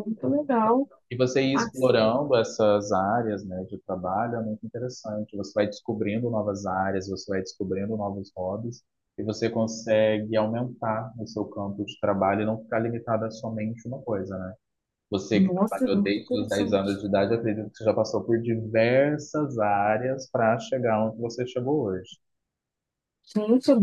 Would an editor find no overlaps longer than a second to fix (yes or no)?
no